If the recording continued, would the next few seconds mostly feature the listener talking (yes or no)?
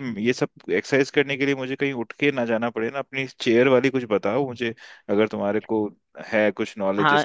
yes